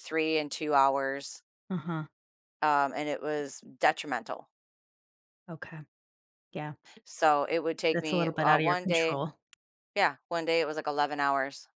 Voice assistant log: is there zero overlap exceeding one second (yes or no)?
no